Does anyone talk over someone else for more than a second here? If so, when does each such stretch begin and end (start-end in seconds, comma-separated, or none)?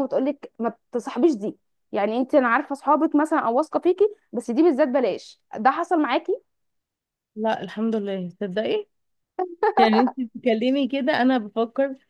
none